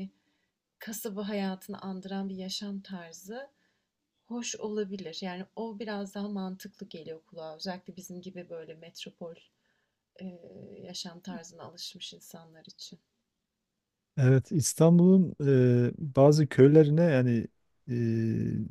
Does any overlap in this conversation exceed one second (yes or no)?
no